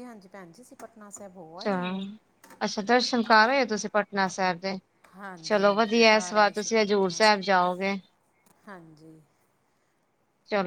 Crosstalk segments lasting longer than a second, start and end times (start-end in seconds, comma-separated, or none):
5.4-7.5